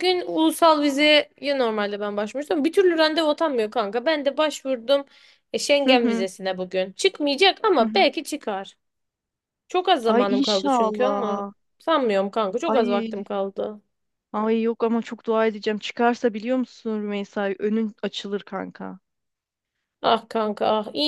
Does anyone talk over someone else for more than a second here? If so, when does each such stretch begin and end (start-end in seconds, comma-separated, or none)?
10.1-11.5